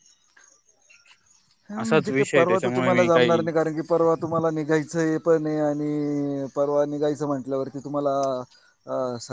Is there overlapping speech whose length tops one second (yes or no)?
yes